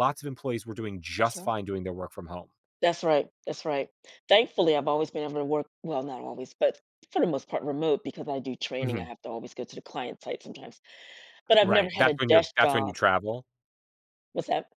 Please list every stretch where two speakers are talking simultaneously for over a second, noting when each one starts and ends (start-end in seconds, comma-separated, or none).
11.6-12.9